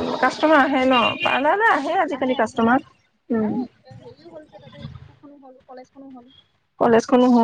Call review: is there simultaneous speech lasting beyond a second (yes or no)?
no